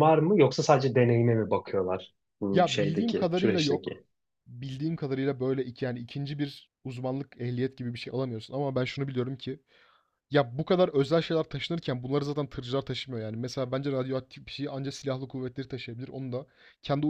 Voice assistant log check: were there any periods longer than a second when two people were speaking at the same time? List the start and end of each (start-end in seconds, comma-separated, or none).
2.5-4.0